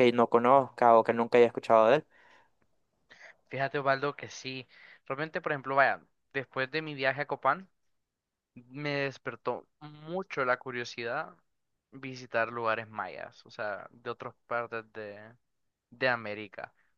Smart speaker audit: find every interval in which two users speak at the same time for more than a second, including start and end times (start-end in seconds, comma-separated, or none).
none